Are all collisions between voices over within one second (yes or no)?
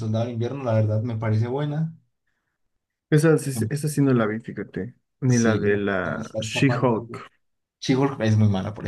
no